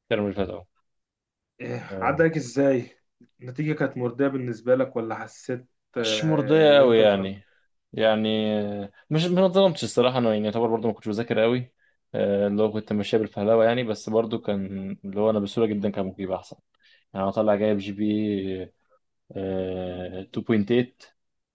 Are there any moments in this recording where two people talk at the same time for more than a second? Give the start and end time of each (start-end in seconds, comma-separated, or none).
6.0-7.4